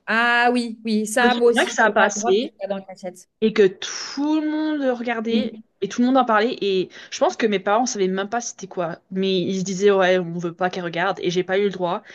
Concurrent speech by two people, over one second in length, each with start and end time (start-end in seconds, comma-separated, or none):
1.2-2.5